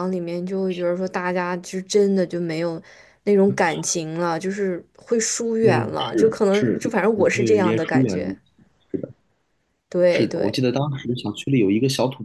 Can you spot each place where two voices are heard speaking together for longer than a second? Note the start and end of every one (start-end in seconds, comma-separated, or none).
5.6-8.3